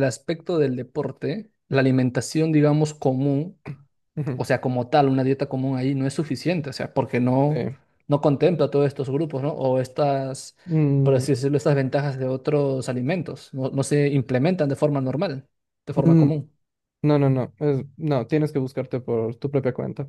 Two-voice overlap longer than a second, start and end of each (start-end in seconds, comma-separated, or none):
none